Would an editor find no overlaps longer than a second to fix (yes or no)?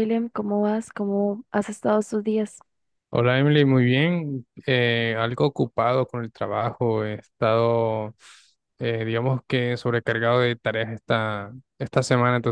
yes